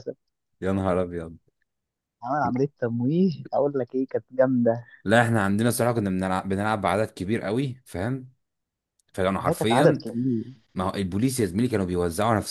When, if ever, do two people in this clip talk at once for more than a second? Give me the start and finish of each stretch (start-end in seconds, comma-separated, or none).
none